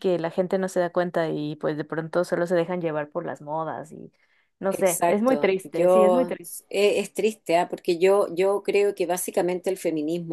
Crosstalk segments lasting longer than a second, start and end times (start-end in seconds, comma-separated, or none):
4.7-6.3